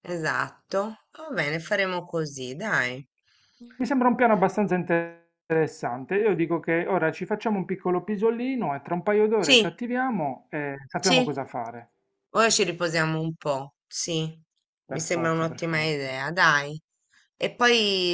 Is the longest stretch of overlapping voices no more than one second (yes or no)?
no